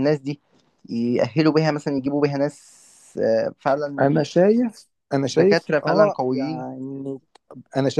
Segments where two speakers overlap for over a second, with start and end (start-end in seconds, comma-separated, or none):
5.3-6.7